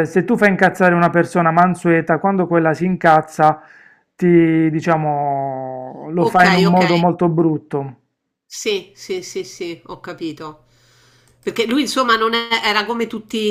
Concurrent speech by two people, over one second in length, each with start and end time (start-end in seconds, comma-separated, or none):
none